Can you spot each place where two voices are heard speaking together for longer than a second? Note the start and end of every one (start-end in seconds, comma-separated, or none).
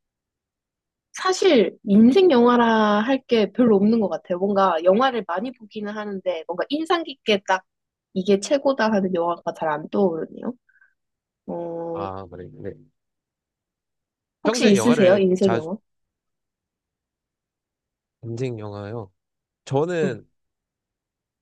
14.4-15.7